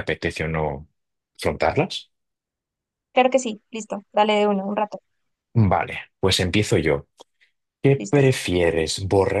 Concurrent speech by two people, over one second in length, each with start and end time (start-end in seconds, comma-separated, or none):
none